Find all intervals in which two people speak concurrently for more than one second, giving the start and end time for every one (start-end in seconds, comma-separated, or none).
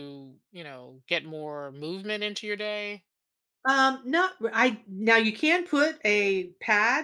none